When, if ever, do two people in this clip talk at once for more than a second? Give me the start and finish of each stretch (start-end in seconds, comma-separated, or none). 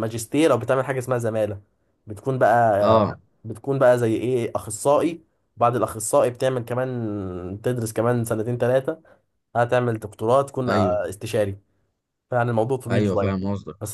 none